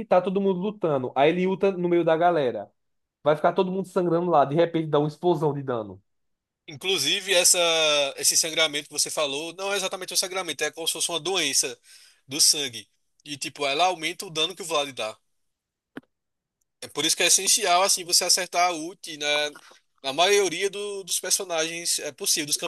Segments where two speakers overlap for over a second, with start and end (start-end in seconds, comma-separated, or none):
none